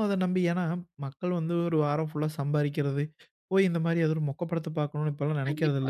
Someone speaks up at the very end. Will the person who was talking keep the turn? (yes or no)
no